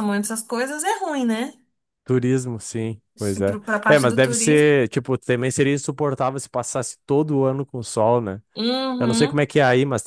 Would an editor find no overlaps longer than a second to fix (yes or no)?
no